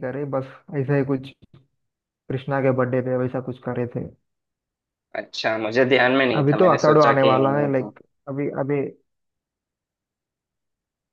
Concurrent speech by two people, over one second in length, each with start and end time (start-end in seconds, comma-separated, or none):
6.3-7.9